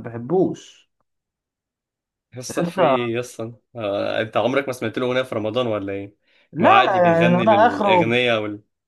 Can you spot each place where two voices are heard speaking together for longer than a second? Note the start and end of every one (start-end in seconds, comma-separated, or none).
6.6-8.1